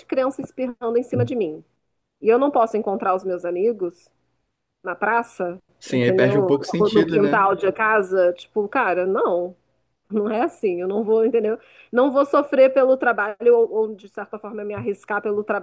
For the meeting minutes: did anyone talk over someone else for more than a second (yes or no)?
yes